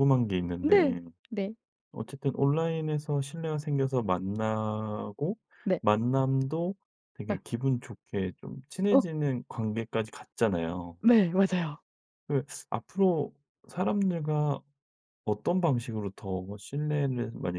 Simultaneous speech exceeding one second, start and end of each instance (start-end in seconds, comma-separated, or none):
none